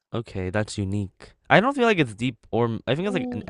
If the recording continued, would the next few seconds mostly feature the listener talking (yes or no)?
yes